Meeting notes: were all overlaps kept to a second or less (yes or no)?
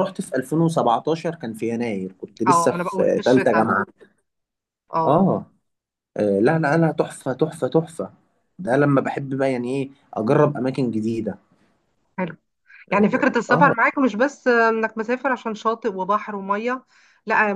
no